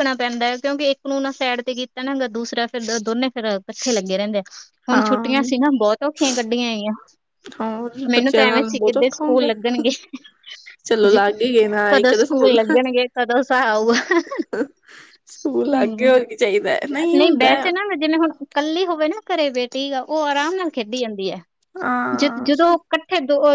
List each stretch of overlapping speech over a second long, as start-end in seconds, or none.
8.1-9.5